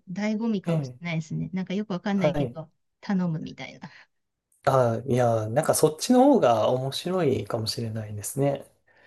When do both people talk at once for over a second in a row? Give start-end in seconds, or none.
none